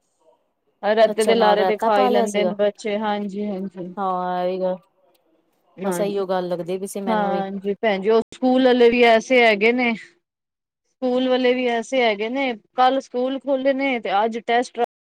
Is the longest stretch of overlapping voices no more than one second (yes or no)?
no